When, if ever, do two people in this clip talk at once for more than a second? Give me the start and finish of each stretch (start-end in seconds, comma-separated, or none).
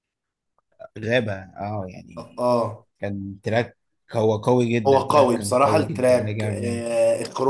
4.8-6.8